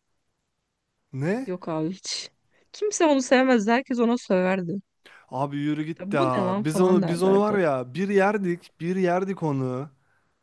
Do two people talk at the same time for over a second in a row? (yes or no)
yes